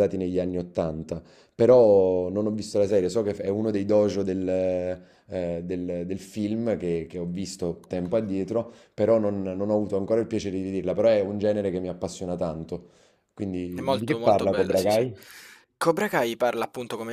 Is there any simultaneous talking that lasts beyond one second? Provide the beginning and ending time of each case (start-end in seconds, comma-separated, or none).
13.7-15.0